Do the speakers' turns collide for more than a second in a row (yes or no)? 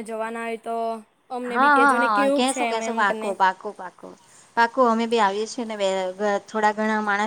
yes